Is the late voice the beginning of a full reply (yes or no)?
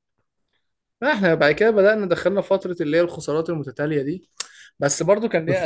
yes